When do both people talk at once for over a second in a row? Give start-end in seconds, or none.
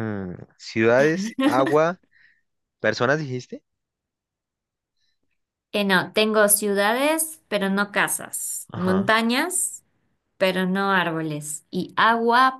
none